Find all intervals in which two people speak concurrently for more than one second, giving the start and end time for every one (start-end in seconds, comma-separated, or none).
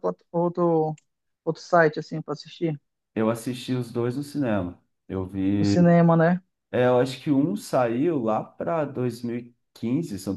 none